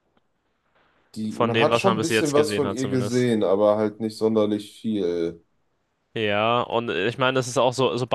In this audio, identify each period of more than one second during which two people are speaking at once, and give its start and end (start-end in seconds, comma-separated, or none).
1.3-3.3